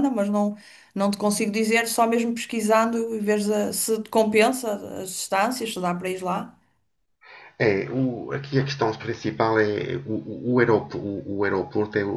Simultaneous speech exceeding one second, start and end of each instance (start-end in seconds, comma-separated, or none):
none